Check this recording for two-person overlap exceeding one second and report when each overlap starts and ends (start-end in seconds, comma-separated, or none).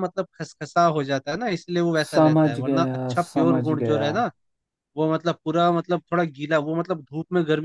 2.0-4.0